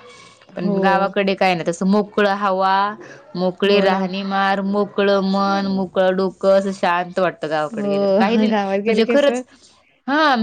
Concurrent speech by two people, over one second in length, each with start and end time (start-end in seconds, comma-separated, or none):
7.7-9.4